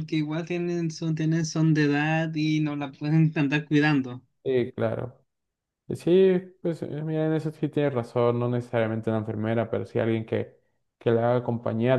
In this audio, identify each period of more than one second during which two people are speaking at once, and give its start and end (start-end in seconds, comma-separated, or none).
none